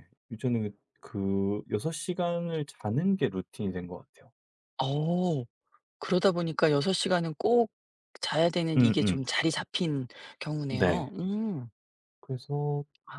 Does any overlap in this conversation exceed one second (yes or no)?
no